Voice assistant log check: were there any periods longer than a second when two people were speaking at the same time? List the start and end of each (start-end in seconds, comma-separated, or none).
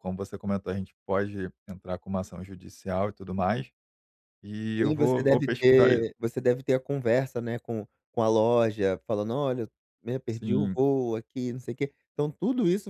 4.8-6.1